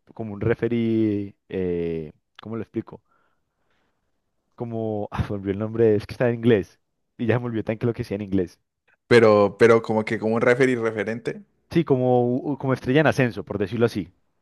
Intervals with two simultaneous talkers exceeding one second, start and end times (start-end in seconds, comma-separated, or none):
none